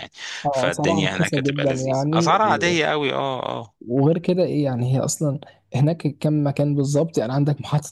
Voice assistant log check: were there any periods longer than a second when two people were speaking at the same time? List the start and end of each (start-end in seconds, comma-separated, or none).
0.5-2.7